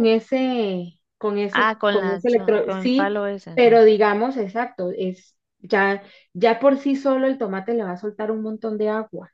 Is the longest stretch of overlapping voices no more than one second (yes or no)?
no